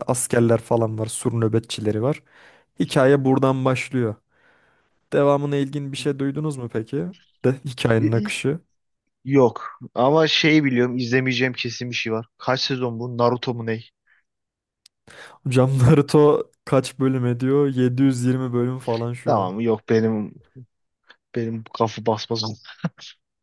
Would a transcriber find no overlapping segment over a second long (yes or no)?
yes